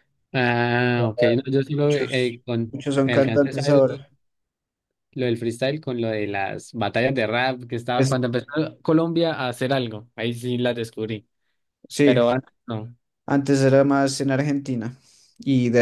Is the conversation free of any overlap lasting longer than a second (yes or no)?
no